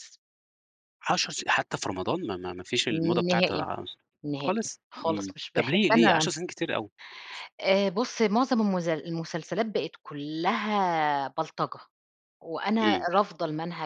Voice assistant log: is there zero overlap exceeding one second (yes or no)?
no